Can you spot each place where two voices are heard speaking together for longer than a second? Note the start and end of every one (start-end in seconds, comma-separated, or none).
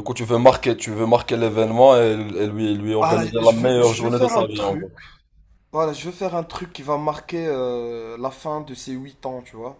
3.0-4.9